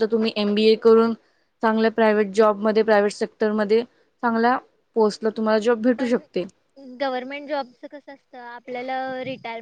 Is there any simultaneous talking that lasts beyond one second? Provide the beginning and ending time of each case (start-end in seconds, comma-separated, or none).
none